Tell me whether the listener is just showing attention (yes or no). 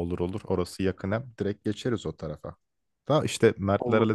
yes